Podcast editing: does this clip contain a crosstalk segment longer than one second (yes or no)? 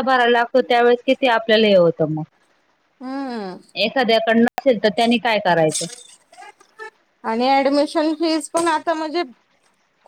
no